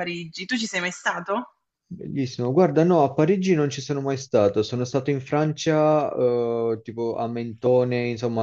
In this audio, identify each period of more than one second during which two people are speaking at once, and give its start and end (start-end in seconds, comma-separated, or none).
none